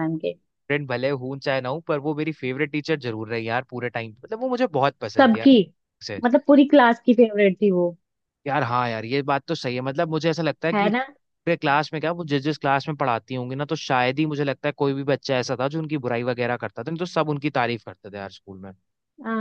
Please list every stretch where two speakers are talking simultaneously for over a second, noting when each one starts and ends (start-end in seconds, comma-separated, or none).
none